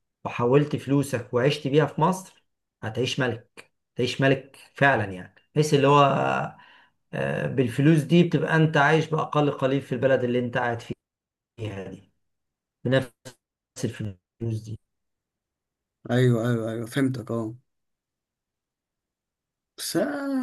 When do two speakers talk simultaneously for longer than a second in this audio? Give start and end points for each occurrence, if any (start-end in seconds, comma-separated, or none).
none